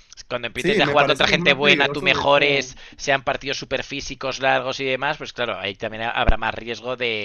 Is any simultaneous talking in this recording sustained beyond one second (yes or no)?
yes